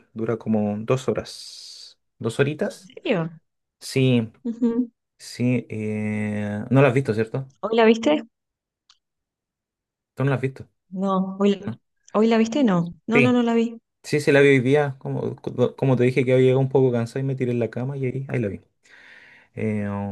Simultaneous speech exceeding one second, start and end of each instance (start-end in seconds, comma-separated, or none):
none